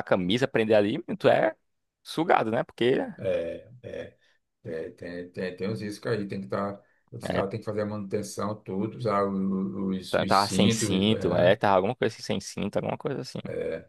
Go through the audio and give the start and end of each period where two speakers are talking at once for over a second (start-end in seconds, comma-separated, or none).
10.1-11.5